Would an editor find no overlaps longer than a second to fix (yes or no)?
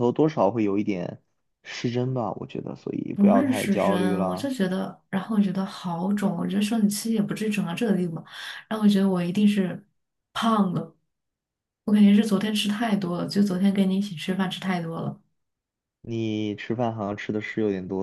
no